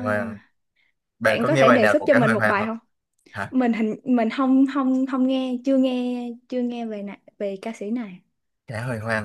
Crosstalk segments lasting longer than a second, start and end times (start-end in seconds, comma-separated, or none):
1.2-2.7